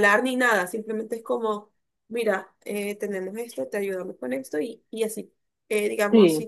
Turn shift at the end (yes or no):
no